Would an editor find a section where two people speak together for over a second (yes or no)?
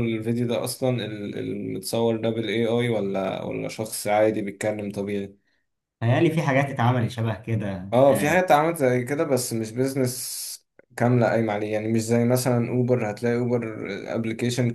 no